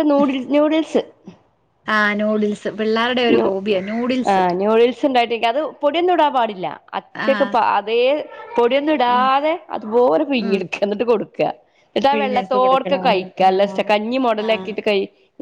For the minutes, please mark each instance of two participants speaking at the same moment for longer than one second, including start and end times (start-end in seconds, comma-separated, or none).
12.1-13.7